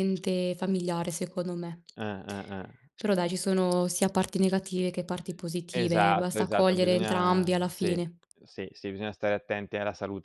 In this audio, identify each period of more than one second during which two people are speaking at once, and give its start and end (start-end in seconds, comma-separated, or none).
5.7-8.0